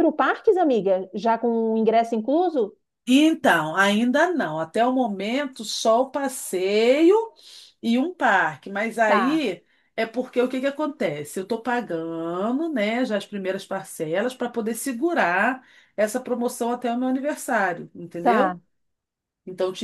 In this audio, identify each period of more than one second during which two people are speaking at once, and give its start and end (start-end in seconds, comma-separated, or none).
none